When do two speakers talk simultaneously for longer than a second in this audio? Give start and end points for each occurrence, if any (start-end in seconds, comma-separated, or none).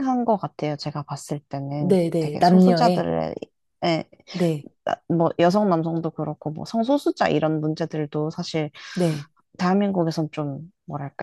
1.8-3.1